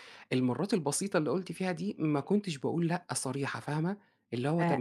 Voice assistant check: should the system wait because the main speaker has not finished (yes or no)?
no